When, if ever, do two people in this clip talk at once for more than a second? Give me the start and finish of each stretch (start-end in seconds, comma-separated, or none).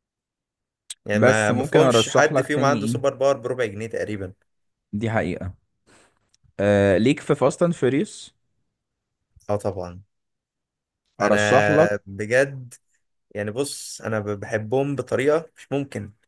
1.1-3.0